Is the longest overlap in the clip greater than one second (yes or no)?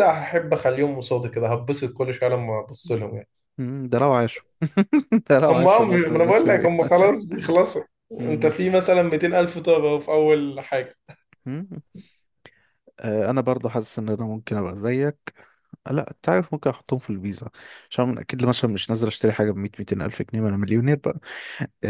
yes